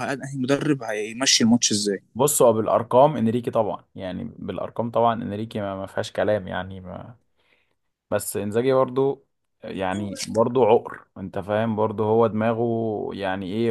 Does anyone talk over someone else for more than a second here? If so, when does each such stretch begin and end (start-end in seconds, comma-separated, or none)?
none